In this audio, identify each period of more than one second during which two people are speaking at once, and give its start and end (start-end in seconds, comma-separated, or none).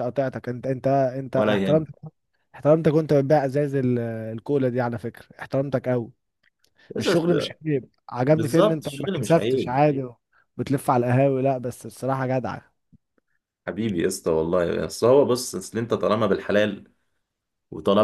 8.3-9.8